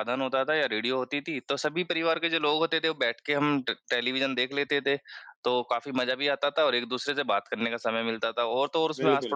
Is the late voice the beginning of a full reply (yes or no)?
no